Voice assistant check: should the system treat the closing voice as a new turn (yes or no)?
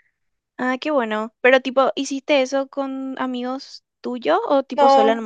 yes